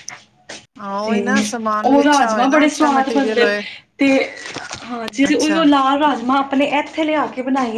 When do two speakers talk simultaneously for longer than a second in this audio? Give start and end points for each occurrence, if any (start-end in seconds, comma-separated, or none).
1.9-3.6